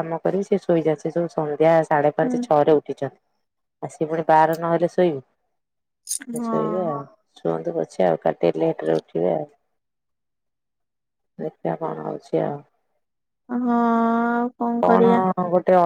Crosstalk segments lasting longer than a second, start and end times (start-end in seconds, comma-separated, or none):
none